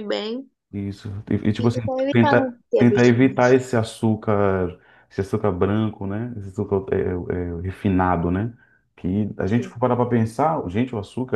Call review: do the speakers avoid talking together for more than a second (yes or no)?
no